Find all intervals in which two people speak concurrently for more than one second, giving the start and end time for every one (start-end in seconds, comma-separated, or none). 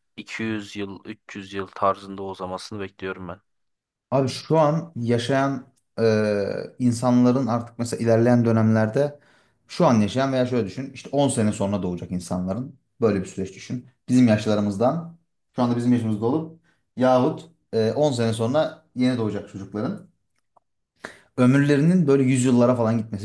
none